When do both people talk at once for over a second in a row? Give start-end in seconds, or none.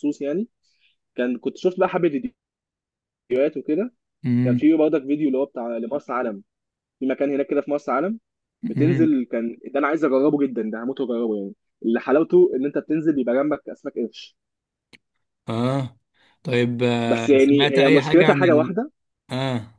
17.1-18.7